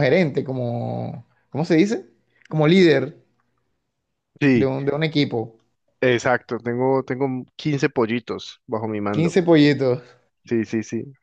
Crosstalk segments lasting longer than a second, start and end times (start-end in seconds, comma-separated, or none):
none